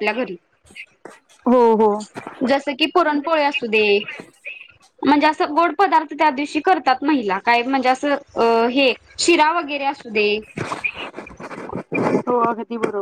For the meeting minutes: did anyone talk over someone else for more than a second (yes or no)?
no